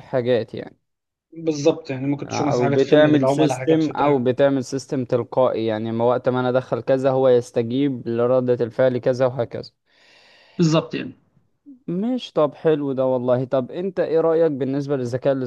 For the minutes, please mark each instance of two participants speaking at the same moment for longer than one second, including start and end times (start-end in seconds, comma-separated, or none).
2.2-4.2